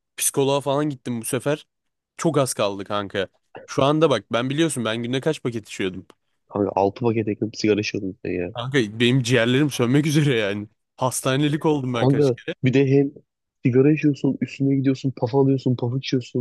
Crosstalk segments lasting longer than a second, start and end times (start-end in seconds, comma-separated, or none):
none